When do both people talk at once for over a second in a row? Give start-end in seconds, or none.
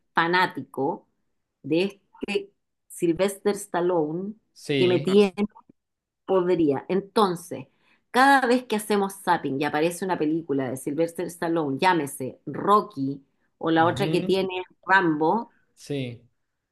none